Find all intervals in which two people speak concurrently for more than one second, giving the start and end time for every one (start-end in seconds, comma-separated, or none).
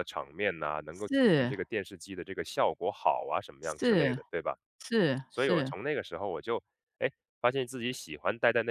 none